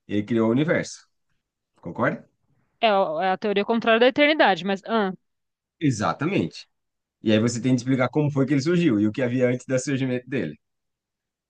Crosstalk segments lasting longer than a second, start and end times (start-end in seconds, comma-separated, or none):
none